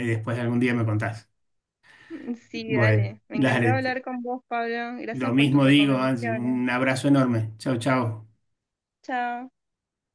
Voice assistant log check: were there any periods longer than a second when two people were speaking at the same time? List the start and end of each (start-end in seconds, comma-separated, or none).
2.5-4.0, 5.1-6.6